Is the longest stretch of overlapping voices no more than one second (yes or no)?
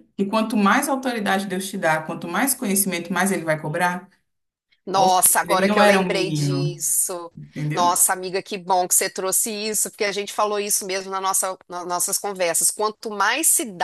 no